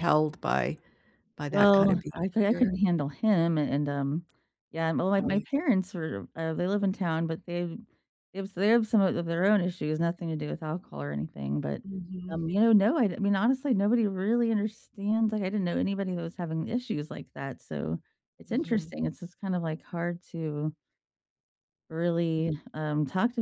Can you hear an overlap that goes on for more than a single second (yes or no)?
yes